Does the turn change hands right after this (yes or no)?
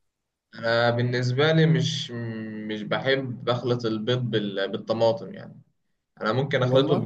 no